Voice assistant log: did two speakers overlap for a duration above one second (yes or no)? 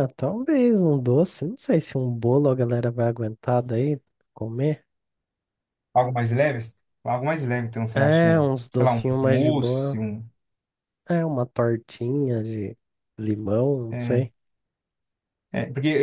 yes